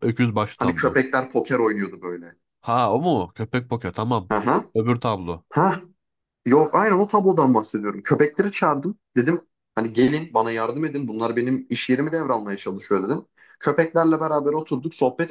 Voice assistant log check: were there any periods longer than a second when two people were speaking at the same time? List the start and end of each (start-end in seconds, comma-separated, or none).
none